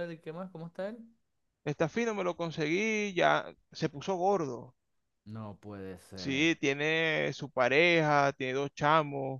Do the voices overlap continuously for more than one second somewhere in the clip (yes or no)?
no